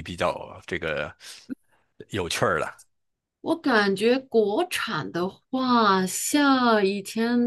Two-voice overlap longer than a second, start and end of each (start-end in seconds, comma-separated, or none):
none